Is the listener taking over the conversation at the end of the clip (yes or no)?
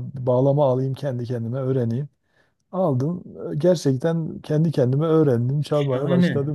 yes